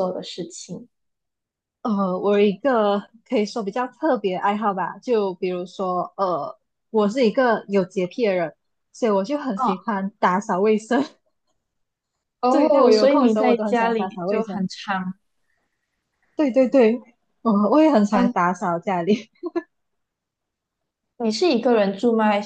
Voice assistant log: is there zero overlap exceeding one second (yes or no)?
no